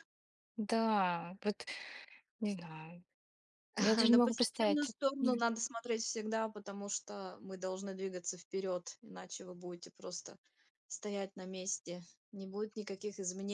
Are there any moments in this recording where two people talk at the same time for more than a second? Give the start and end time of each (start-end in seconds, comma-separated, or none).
3.8-5.4